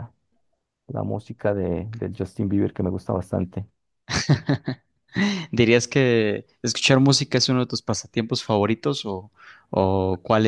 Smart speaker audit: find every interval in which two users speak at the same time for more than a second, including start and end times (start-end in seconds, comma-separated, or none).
none